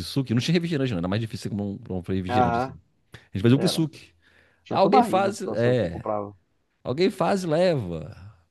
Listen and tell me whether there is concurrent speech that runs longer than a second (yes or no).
yes